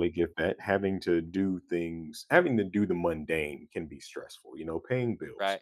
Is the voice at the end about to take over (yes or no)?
no